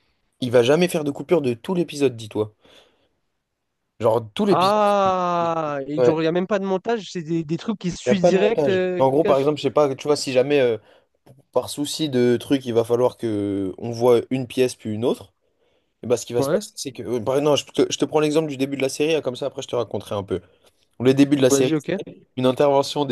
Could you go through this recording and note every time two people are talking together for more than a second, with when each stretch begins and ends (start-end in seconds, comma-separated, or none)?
8.1-9.5